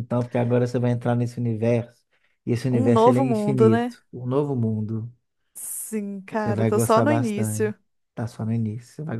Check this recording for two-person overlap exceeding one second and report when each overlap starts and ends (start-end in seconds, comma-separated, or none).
2.7-4.0, 6.4-7.7